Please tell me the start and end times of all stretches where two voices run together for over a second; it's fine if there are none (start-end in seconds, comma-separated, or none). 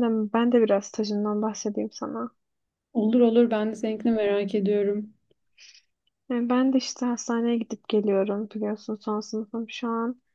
none